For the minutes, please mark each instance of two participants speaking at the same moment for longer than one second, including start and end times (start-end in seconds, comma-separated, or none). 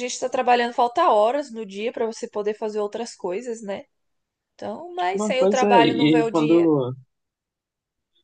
5.1-6.7